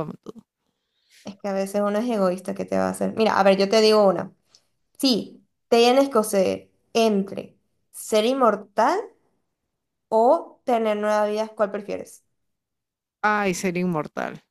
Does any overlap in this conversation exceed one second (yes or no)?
no